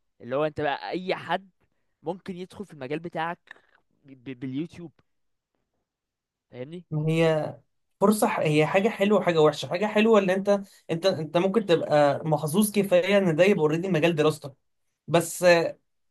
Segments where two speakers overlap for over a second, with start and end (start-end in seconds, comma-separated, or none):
none